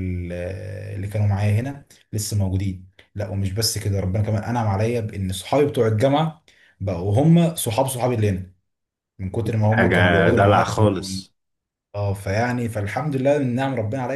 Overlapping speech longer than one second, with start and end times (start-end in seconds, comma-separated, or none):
9.7-11.2